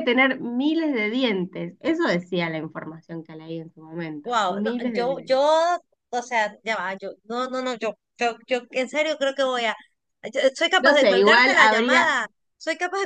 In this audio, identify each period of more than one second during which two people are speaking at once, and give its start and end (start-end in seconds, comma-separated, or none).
4.2-5.5, 10.8-12.2